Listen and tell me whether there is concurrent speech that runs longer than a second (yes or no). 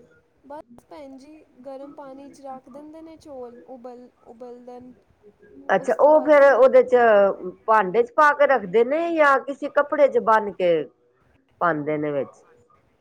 no